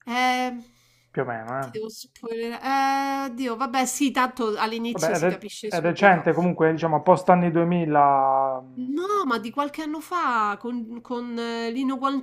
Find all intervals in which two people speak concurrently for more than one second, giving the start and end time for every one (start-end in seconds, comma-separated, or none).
4.9-6.3